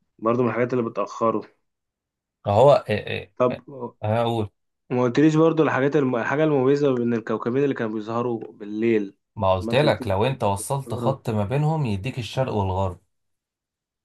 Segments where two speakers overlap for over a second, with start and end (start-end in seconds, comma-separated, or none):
9.6-11.2